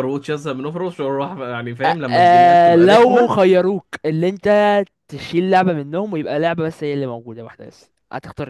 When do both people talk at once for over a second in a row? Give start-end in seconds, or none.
1.9-3.3